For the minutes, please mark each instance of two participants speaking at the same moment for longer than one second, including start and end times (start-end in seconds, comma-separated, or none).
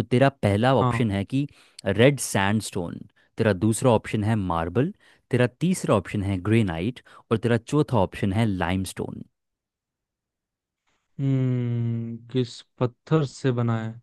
none